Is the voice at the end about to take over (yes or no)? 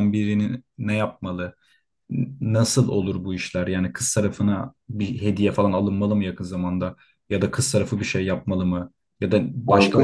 no